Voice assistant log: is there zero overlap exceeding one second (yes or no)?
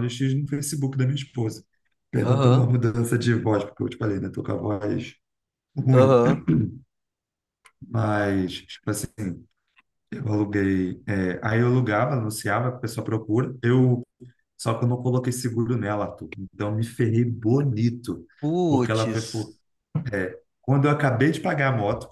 yes